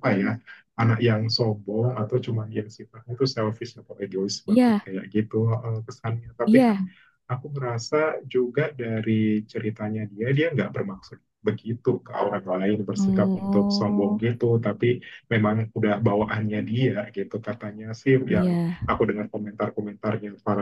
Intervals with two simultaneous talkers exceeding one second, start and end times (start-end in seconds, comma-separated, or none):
13.0-14.2